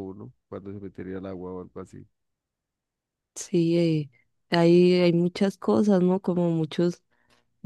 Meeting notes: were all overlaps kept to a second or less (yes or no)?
yes